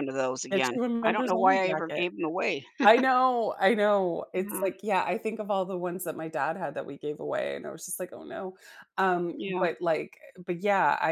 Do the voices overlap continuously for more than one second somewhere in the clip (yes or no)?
yes